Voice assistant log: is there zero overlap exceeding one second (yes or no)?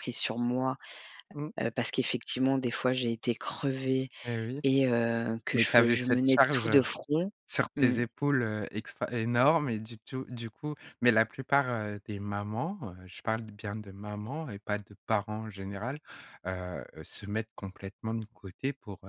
no